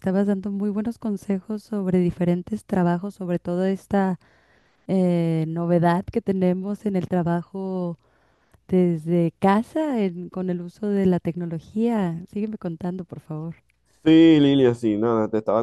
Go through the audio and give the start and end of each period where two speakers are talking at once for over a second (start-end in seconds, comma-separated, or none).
none